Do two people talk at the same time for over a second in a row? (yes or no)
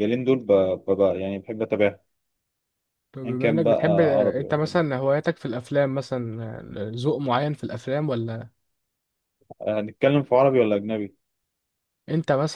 yes